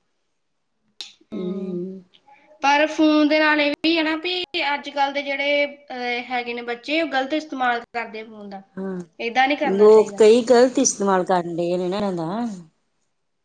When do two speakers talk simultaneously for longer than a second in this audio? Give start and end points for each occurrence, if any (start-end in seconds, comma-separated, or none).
none